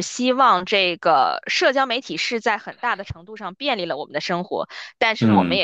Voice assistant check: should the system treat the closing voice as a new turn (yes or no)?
no